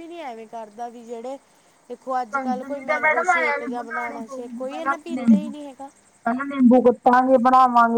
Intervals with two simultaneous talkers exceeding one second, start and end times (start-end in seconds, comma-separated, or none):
2.3-4.2